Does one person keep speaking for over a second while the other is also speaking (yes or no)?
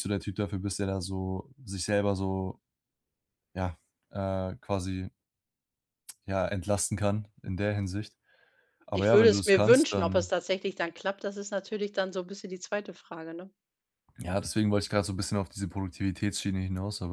yes